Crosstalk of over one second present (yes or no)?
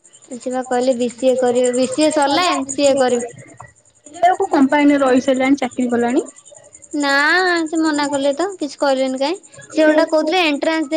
no